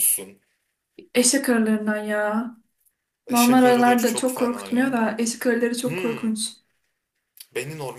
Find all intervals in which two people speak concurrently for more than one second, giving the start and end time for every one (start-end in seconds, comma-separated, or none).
3.3-5.1